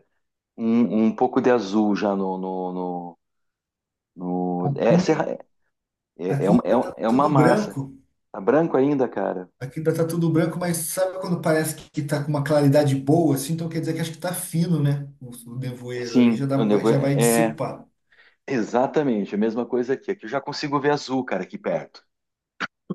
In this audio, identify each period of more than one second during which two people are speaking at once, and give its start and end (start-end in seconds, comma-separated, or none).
6.3-7.8, 16.0-17.6